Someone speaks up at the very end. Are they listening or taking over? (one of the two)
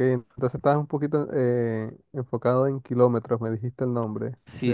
taking over